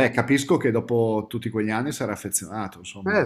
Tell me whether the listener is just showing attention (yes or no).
no